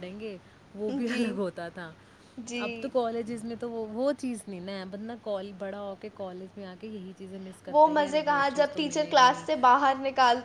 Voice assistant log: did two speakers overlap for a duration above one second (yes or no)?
yes